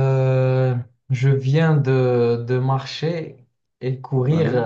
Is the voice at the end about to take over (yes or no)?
no